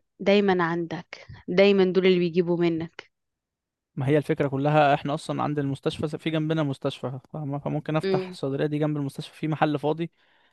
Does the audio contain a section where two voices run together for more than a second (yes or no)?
no